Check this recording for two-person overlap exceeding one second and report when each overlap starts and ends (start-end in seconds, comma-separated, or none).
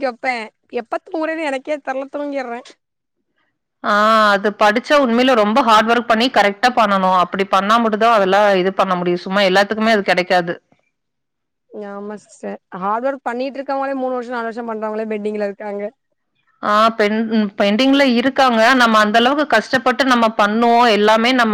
none